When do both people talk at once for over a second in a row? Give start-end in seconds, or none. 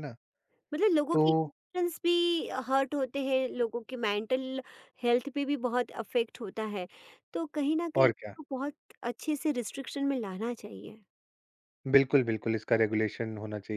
none